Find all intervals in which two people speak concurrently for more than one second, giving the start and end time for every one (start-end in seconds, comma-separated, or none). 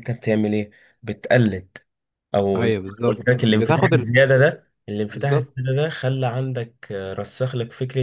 2.5-4.1